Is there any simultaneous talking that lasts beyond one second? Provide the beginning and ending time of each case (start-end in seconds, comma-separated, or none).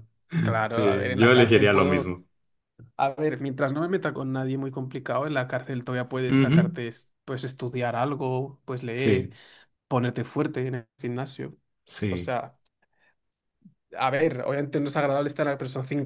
0.7-2.2